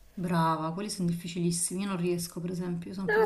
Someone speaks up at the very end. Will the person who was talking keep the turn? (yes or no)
no